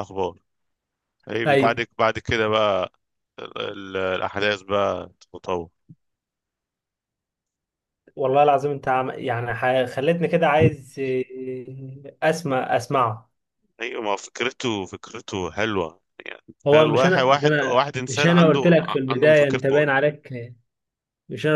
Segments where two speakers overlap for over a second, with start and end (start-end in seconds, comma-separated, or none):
16.7-19.9